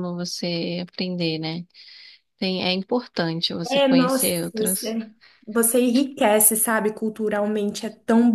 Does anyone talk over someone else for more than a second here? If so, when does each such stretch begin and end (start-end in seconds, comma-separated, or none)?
3.7-5.0